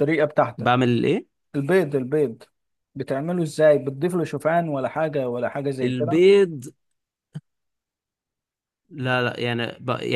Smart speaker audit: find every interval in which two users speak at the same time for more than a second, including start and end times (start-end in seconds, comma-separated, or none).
none